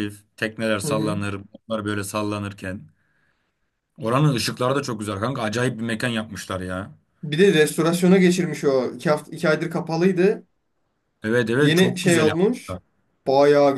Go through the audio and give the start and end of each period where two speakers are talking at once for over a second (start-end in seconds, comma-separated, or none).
11.6-12.8